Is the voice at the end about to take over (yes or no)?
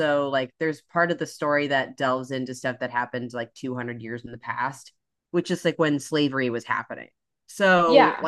no